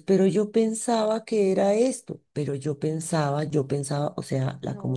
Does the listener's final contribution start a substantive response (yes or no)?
no